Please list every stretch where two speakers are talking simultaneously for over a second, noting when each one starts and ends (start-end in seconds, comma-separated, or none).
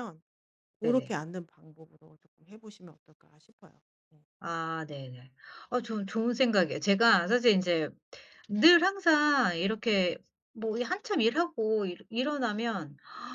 none